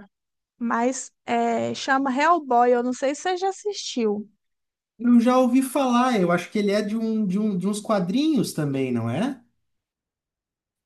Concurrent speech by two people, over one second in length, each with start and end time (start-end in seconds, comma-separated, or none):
none